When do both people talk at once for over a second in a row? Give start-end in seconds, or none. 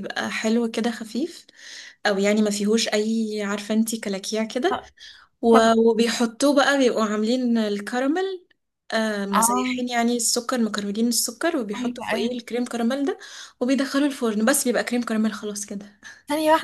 none